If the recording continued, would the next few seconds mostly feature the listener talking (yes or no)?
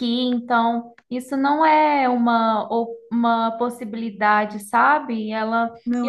no